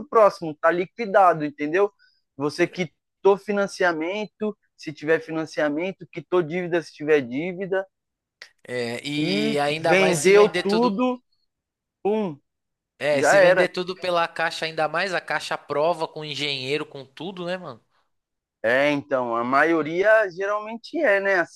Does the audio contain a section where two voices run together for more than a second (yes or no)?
yes